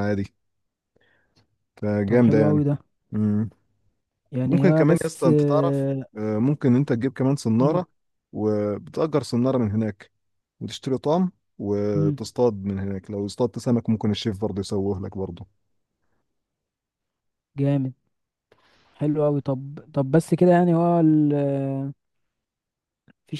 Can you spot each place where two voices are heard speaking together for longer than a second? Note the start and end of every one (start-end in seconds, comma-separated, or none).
4.5-6.0